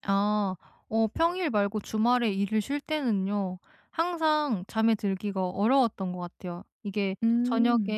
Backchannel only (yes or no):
yes